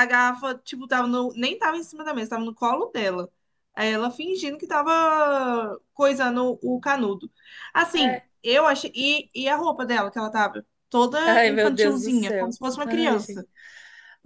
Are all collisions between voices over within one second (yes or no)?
no